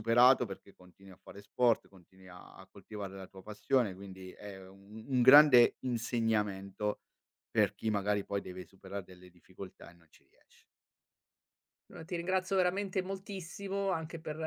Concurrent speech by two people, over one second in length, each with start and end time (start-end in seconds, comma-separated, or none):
none